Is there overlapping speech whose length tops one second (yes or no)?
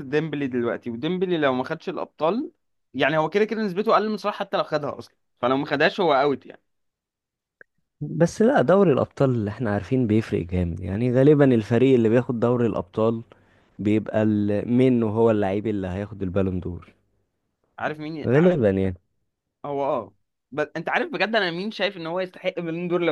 no